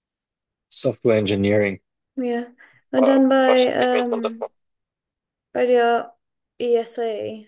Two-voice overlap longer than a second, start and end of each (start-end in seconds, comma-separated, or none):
2.9-4.5